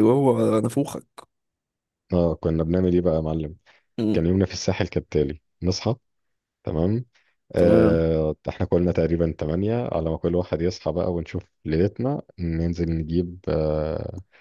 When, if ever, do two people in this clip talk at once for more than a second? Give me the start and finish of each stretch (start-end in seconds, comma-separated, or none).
none